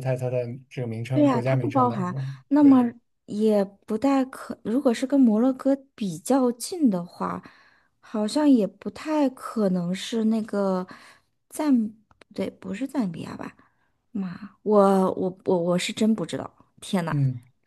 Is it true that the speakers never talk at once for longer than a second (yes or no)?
no